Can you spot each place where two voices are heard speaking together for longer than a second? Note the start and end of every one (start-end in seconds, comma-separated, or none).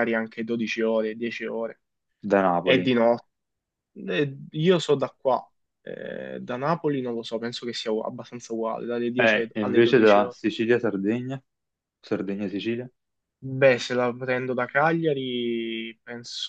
9.2-10.4